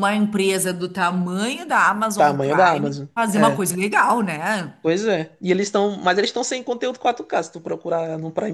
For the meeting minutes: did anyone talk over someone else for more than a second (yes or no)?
yes